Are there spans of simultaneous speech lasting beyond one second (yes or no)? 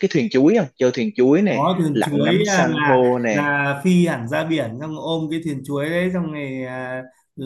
yes